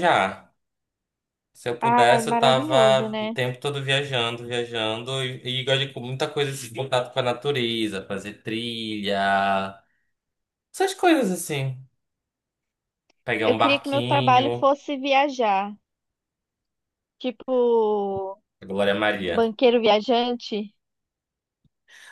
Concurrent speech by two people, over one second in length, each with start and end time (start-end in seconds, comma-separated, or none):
1.8-3.4, 13.4-14.7